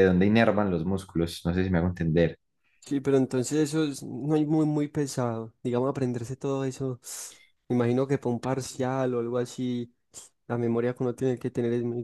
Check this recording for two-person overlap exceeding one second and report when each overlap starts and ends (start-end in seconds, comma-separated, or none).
none